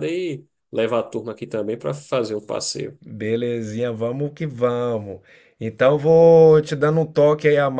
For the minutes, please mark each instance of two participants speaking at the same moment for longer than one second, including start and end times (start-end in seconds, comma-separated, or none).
none